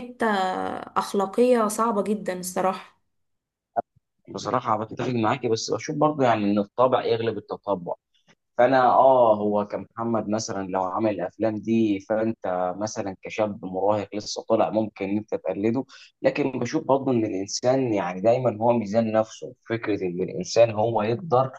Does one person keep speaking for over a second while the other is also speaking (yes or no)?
no